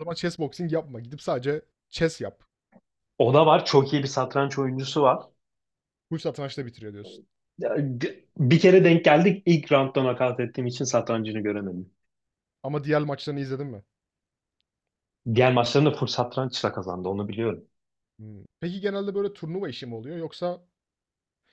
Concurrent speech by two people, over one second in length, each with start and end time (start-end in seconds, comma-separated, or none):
none